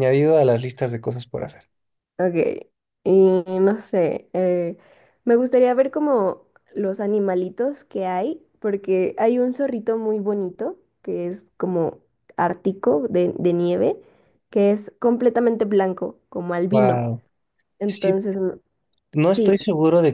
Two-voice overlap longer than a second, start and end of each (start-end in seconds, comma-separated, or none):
none